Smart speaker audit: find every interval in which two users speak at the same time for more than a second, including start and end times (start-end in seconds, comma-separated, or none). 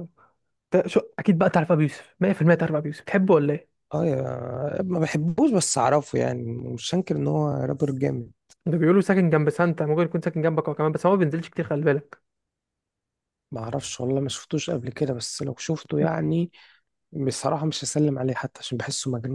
none